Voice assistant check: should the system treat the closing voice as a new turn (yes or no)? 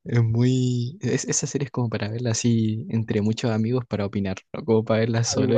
yes